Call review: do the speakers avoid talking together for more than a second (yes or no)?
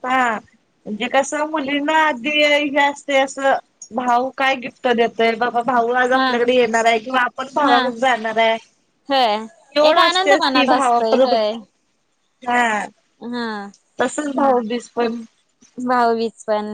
no